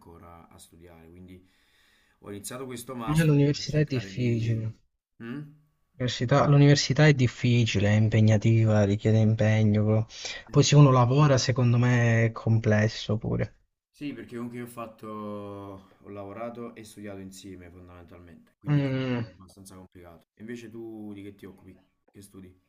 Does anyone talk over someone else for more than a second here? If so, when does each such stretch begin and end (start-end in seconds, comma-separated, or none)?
3.1-4.6